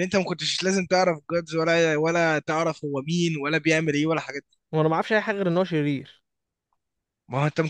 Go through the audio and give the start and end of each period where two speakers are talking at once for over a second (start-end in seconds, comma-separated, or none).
none